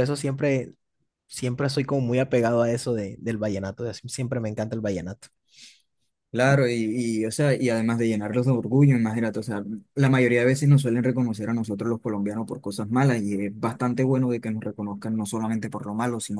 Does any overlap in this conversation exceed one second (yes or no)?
no